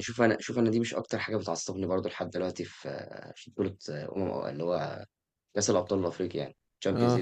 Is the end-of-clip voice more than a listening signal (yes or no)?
no